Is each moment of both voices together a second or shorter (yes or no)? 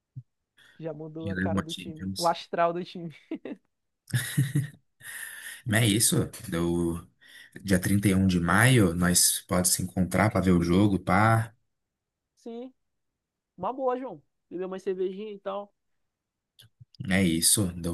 no